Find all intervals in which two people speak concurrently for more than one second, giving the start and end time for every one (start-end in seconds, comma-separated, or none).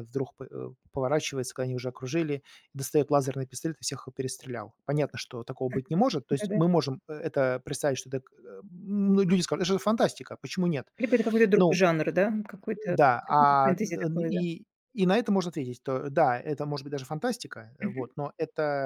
12.9-14.4